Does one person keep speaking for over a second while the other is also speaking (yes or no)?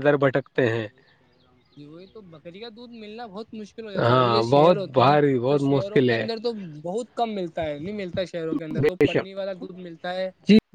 yes